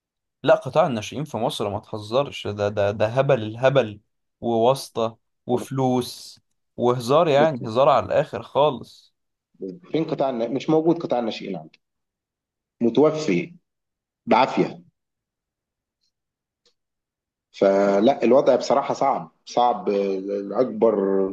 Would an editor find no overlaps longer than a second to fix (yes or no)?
yes